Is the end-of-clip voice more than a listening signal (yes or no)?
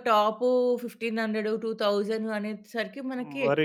yes